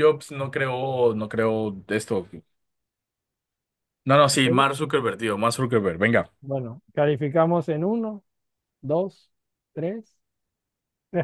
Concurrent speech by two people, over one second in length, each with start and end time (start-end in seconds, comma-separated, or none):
none